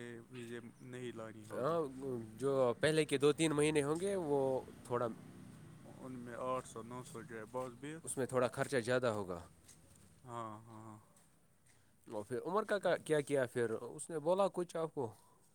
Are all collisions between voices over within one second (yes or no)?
yes